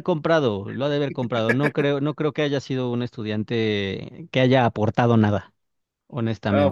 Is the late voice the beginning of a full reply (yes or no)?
yes